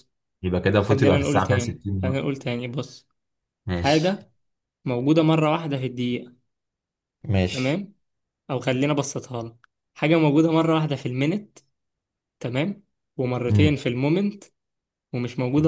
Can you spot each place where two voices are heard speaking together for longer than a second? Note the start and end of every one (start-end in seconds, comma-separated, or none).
0.8-2.3